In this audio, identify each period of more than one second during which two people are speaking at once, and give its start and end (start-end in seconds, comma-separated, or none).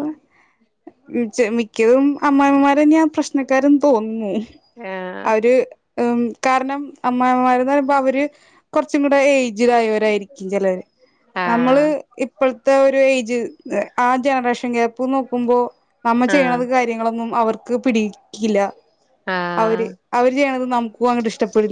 none